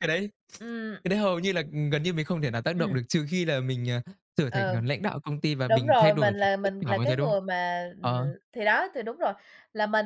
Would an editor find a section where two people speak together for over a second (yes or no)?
yes